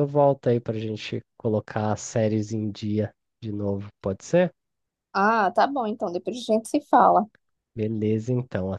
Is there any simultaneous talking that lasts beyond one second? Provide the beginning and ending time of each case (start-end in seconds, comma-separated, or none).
none